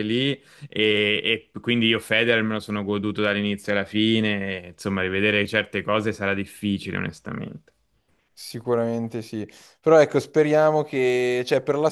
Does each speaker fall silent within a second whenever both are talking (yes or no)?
yes